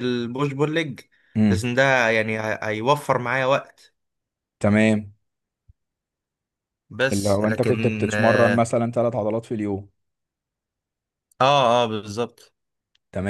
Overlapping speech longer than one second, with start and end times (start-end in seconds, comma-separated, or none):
7.1-8.7